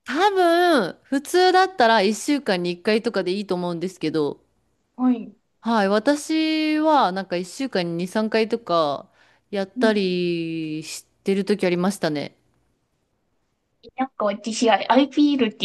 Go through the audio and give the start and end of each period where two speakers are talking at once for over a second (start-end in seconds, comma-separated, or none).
none